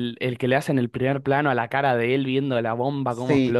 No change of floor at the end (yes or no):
no